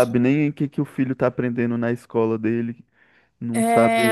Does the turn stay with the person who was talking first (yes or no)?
no